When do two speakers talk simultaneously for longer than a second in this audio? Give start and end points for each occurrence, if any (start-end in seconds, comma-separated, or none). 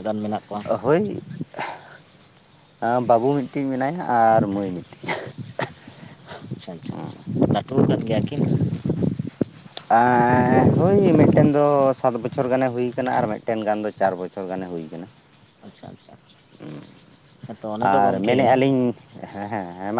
none